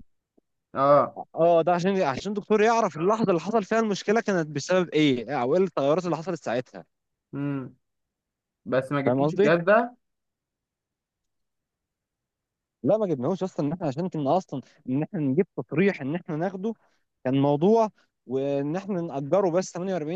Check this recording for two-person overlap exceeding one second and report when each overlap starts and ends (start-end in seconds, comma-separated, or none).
none